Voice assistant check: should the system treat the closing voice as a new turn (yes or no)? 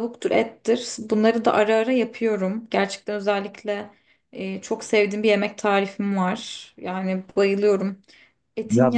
yes